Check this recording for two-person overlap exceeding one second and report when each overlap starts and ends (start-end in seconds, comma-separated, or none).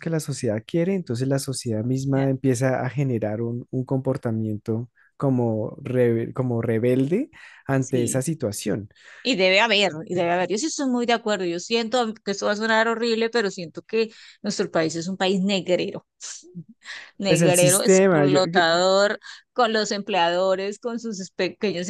17.2-18.6